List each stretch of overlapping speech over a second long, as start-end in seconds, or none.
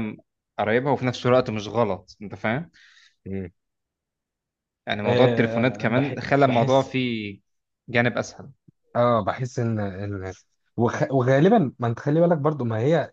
5.0-6.9